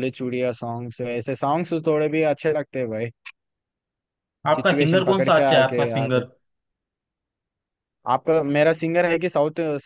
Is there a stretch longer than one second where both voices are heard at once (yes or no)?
yes